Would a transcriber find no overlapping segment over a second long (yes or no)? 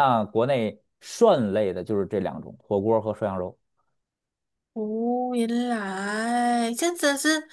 yes